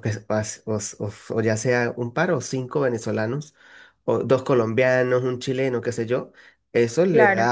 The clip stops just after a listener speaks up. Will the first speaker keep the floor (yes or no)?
yes